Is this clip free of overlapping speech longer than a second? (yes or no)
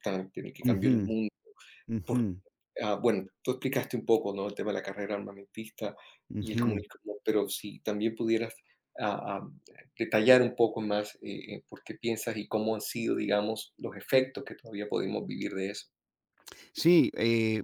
yes